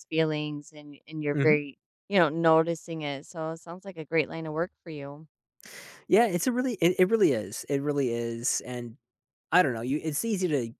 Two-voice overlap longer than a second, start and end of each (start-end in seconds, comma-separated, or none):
none